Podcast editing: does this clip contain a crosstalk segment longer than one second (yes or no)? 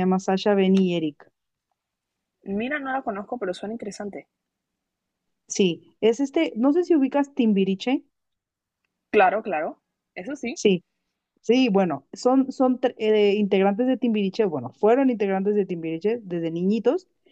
no